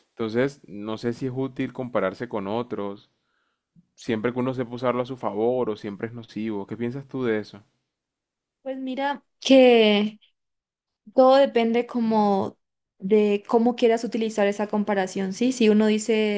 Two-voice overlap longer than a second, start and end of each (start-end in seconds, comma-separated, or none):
none